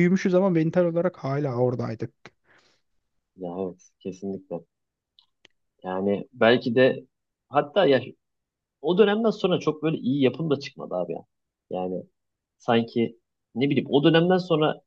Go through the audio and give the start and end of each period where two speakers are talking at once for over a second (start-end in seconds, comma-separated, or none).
none